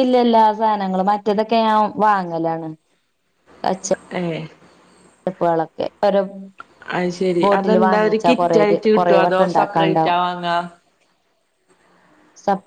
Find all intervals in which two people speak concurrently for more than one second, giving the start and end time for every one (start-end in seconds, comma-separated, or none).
8.7-10.2